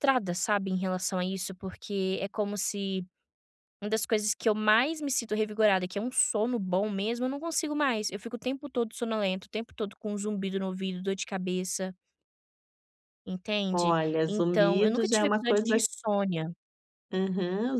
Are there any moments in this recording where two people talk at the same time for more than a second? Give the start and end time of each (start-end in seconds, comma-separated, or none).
13.7-15.7